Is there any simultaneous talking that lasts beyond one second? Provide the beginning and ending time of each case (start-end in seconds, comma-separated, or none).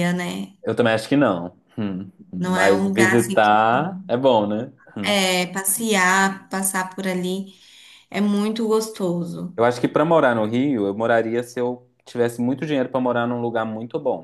2.4-3.5